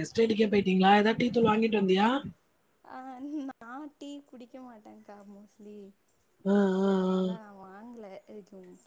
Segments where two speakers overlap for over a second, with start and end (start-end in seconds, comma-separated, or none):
none